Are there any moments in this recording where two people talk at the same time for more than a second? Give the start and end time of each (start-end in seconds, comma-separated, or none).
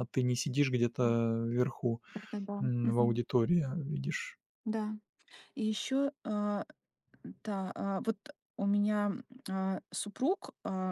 none